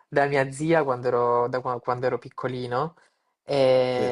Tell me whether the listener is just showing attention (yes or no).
yes